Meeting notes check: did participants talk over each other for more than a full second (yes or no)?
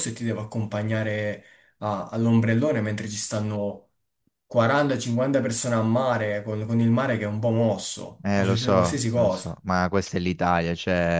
yes